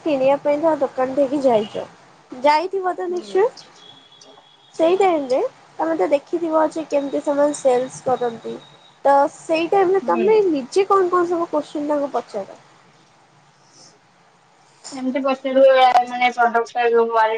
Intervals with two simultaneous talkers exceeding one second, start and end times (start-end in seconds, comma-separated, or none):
none